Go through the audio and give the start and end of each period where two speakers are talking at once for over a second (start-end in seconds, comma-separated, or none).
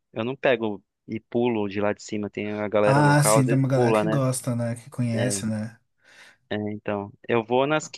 2.8-4.2